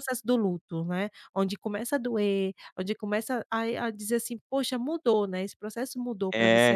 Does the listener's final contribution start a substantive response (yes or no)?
yes